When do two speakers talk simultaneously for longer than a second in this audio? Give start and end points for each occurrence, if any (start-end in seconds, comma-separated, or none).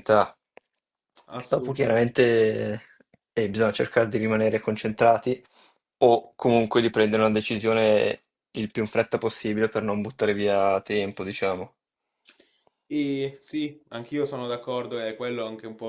none